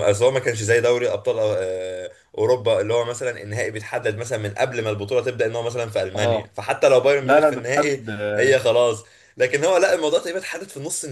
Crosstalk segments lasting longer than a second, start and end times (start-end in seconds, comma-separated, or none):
7.2-8.6